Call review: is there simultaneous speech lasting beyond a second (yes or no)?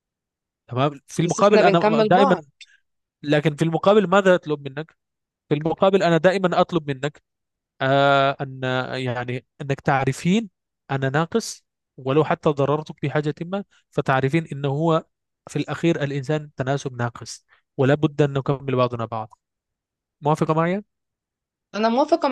yes